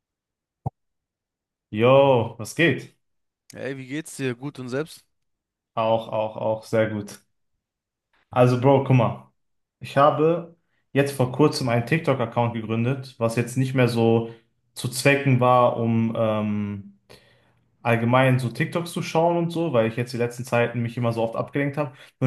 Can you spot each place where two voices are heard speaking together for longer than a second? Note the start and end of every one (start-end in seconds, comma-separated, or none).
none